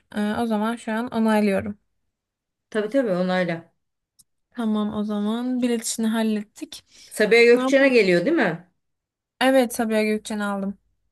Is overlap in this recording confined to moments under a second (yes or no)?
yes